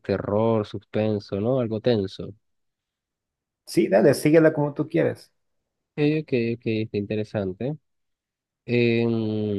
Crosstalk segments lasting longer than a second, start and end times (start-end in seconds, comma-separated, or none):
none